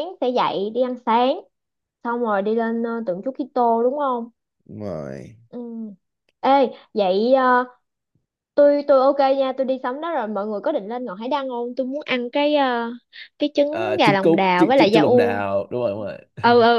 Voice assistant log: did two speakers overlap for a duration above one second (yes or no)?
yes